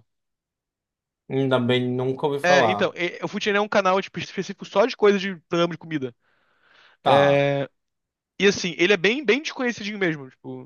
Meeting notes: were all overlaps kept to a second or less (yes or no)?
yes